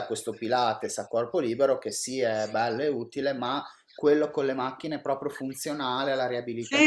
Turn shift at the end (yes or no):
yes